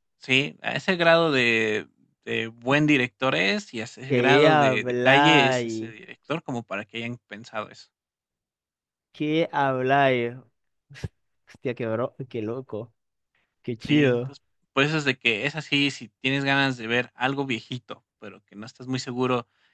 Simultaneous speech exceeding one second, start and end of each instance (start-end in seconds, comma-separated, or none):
4.1-5.9